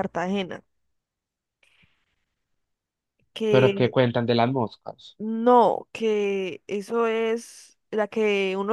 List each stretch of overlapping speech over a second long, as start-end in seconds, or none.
none